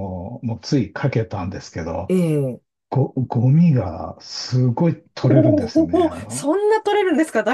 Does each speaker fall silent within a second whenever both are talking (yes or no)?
no